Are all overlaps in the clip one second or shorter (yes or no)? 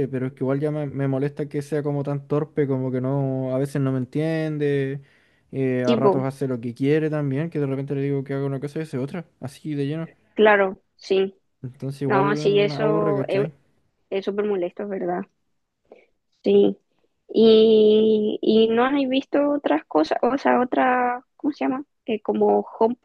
no